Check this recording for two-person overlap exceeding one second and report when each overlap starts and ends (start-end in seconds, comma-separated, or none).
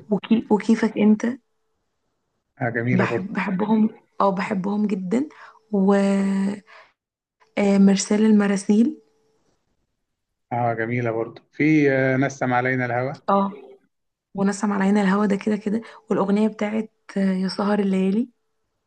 none